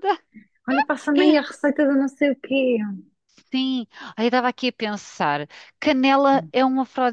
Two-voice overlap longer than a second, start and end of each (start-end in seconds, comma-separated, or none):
none